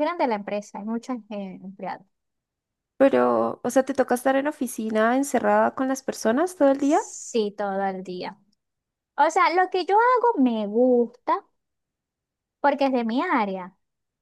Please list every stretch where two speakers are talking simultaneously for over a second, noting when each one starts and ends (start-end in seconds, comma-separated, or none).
none